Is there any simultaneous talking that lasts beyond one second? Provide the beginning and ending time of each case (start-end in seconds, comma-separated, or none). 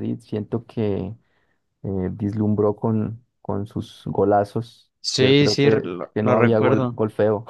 5.0-7.0